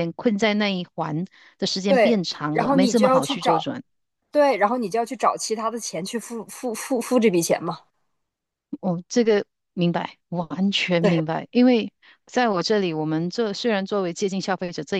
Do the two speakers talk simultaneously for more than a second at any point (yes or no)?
yes